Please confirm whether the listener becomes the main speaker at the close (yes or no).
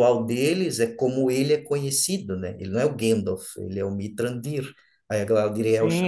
yes